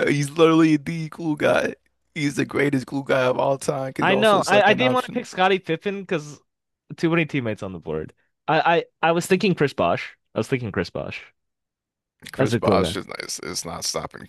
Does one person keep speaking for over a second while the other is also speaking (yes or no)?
yes